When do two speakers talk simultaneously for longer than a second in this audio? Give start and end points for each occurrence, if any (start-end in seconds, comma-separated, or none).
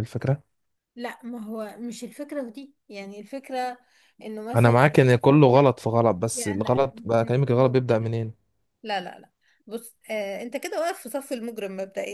6.3-8.1